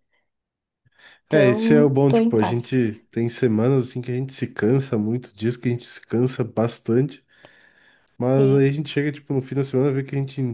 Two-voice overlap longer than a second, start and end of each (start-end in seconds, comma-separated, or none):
1.3-3.1